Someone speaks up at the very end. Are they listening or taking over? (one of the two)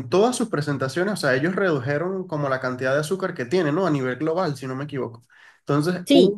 listening